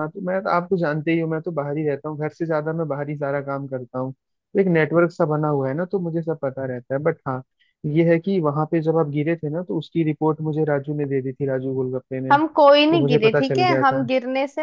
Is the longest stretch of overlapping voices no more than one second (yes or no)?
no